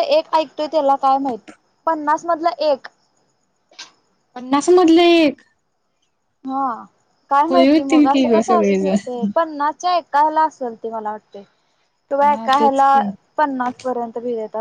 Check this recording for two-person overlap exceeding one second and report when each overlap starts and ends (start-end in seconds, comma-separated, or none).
7.5-9.2